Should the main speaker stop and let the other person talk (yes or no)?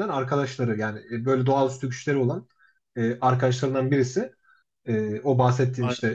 no